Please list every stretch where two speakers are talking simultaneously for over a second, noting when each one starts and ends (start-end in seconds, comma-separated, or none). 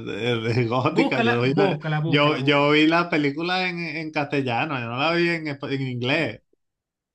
0.9-2.7